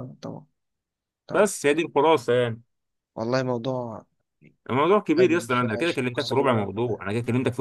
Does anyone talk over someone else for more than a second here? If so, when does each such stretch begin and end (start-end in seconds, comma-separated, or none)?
5.2-6.7